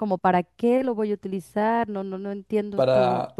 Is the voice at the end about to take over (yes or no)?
no